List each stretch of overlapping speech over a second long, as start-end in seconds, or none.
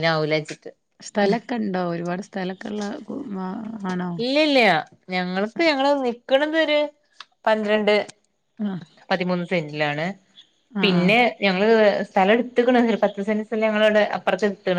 none